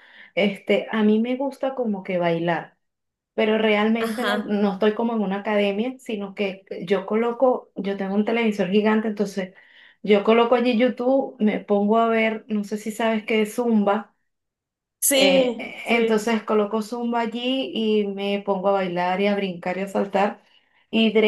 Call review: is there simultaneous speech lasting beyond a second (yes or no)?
yes